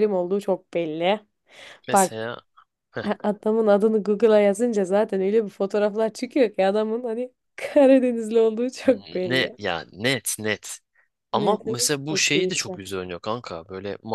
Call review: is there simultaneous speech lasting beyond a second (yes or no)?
yes